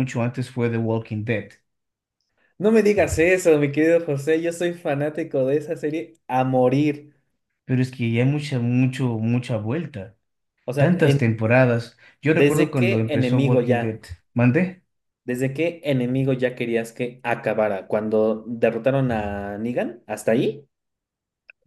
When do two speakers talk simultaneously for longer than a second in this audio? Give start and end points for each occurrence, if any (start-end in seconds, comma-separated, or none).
12.3-14.0